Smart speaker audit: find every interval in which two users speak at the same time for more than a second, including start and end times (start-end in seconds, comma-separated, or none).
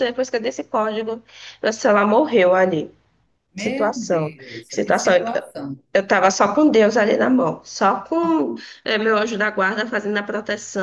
3.5-5.1